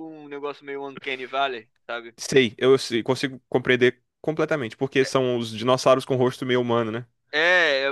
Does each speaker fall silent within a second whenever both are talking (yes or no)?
yes